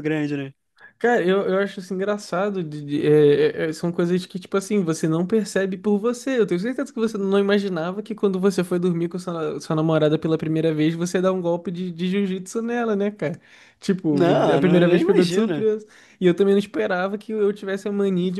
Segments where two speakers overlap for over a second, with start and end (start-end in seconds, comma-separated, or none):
14.1-15.7